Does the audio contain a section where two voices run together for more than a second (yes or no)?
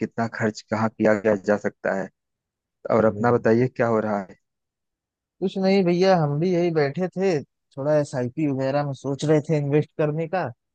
no